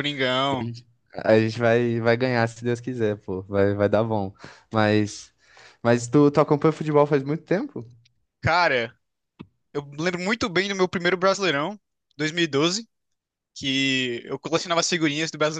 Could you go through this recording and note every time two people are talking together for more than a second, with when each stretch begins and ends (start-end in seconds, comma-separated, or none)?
none